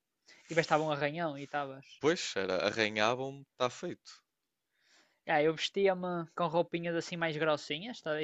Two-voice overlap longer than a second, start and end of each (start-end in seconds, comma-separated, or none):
none